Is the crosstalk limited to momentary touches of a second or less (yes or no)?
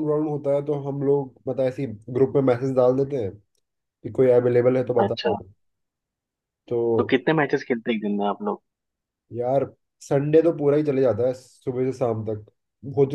yes